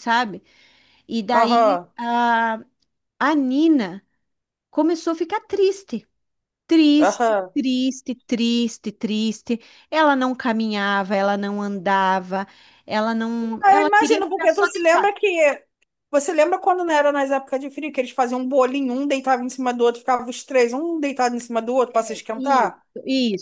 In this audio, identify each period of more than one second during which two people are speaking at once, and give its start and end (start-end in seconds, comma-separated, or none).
13.6-15.1